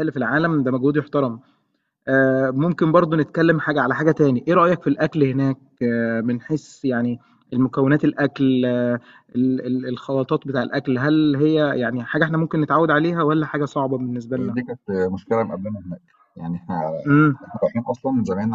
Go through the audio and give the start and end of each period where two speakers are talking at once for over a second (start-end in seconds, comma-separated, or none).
none